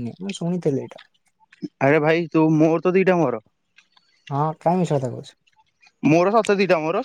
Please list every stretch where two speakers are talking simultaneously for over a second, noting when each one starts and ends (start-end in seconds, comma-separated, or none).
none